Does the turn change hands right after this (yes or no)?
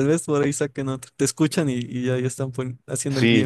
yes